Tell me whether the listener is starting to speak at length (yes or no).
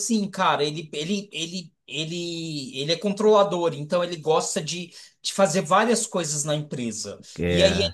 no